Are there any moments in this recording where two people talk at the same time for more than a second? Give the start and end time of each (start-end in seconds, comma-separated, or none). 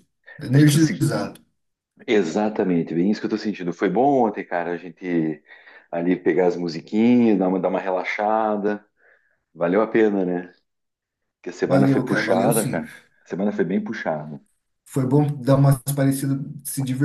11.6-12.8